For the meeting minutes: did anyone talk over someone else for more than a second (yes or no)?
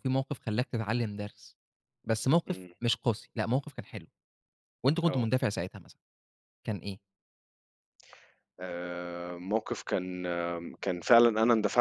no